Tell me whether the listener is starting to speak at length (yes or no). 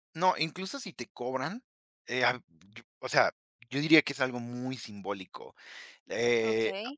yes